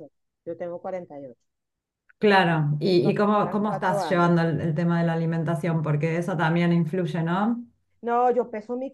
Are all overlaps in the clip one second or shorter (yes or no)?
no